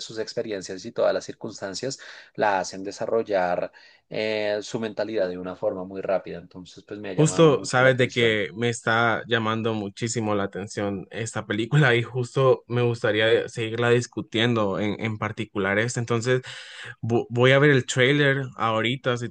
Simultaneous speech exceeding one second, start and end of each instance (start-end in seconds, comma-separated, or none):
7.1-8.4